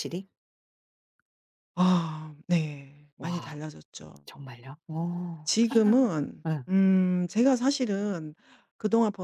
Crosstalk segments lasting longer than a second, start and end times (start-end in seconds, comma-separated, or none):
none